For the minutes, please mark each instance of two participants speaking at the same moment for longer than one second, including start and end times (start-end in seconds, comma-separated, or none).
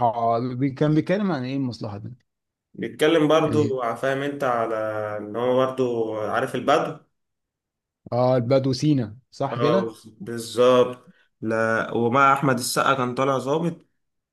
none